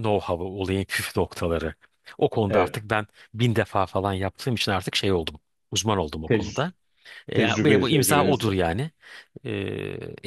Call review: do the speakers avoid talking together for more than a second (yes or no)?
no